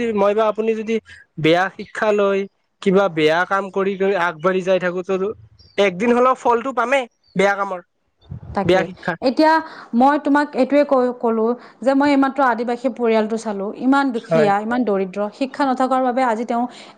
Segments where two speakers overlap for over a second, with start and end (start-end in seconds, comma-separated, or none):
none